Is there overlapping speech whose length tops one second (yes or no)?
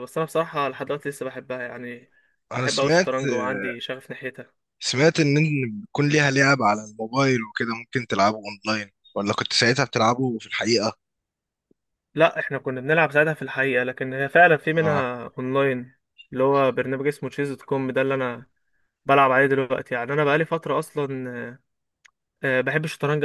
no